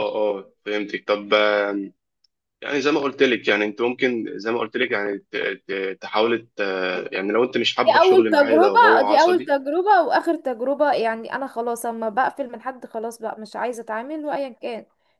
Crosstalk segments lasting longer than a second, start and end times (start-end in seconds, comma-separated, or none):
7.8-9.5